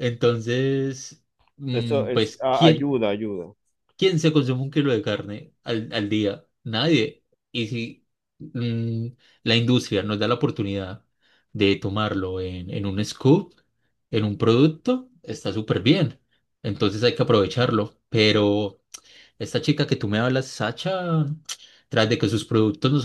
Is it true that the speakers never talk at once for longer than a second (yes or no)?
no